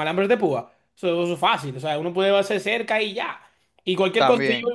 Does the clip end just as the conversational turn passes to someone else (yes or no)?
no